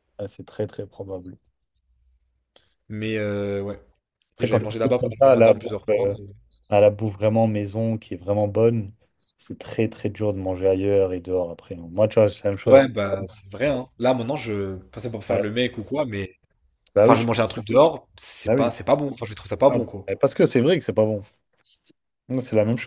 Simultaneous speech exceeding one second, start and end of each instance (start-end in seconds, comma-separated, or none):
4.4-6.2